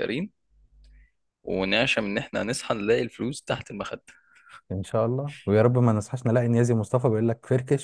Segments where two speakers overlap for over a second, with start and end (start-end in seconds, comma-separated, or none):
none